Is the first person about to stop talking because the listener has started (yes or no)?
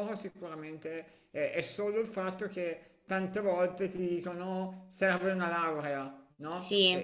no